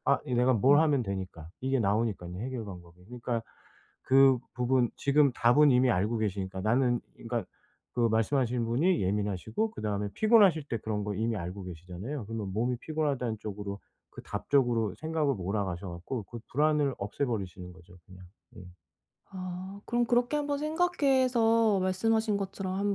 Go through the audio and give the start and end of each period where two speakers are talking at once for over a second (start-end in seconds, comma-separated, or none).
none